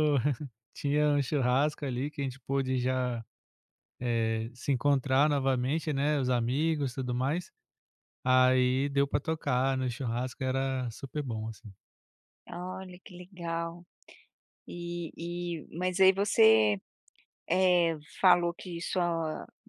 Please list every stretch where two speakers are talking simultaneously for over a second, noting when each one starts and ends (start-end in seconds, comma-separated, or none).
none